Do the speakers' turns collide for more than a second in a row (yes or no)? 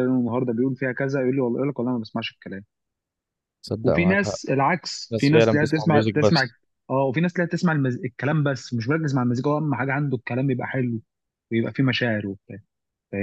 yes